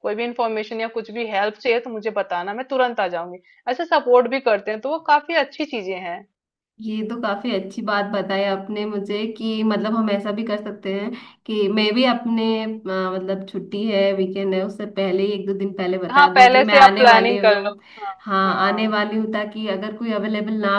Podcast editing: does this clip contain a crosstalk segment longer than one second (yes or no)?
yes